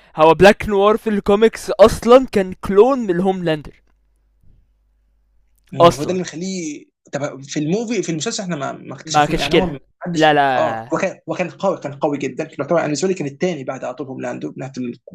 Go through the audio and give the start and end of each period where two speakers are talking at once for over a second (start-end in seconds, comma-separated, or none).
9.1-10.9